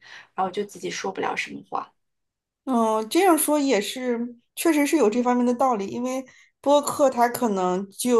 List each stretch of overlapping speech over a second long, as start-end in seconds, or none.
none